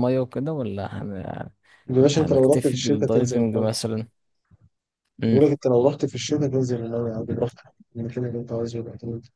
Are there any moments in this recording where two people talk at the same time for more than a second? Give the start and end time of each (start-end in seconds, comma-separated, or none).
2.1-3.7